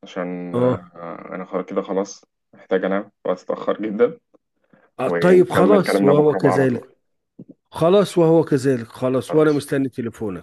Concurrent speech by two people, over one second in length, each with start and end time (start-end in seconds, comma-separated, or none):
5.0-6.9